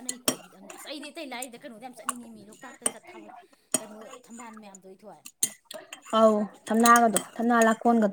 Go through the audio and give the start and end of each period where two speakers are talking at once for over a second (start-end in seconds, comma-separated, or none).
none